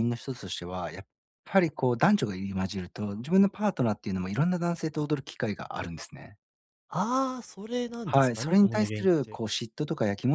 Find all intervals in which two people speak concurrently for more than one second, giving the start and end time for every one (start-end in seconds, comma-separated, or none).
8.0-9.4